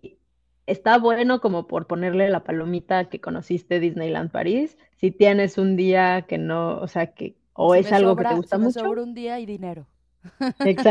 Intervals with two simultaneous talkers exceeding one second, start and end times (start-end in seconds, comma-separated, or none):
7.7-8.9